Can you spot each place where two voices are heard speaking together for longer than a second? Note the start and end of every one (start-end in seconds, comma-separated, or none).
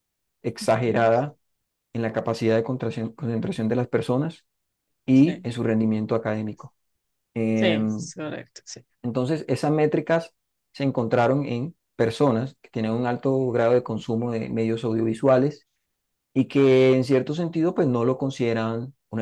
none